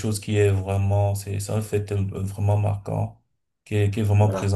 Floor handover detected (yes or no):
no